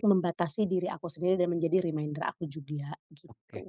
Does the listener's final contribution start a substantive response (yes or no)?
yes